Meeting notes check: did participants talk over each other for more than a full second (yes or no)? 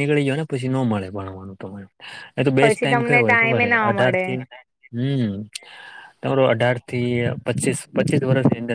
yes